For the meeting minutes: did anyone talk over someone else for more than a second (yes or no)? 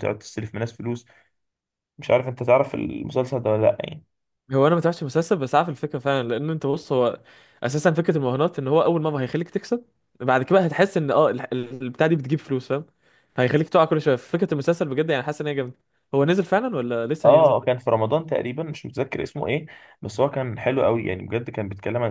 no